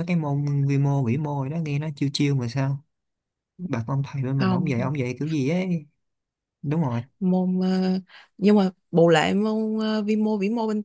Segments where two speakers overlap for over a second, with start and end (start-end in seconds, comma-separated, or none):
none